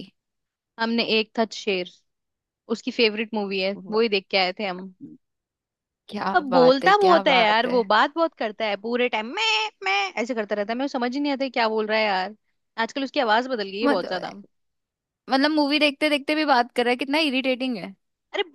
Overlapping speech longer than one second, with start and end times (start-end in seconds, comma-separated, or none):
6.3-7.8